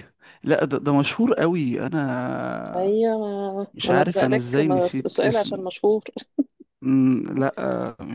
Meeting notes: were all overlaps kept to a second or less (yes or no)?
no